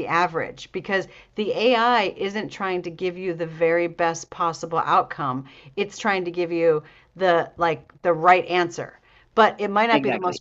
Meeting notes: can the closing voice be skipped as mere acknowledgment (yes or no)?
yes